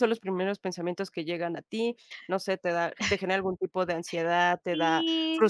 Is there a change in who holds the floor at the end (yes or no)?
yes